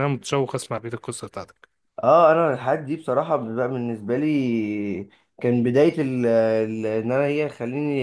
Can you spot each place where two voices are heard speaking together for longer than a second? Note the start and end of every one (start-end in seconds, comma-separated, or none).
none